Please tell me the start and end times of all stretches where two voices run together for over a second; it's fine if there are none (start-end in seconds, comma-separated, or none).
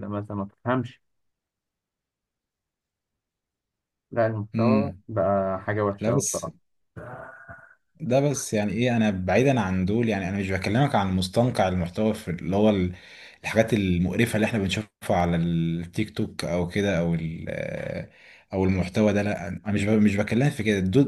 none